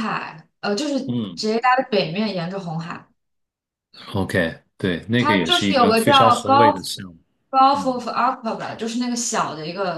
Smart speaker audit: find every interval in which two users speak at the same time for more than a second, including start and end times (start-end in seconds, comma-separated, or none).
5.2-6.8